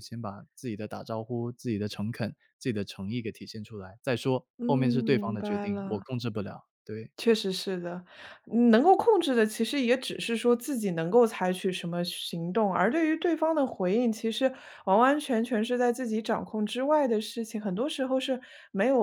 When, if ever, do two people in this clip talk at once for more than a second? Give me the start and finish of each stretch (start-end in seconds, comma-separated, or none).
4.6-6.0